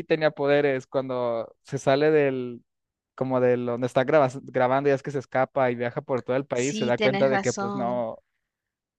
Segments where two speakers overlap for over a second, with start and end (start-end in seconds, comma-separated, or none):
6.5-8.1